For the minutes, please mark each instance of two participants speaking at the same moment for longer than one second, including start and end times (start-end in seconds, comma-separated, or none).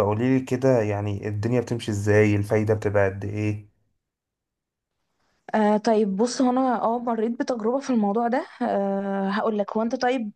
none